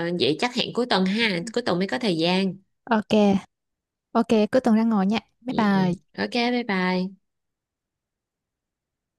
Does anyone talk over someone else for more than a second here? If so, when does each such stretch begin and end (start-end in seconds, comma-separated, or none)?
none